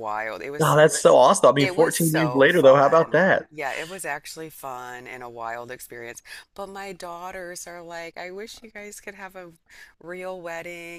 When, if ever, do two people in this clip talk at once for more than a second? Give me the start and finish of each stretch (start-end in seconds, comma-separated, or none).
1.6-3.5